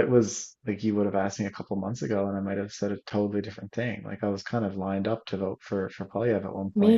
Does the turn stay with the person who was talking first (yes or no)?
no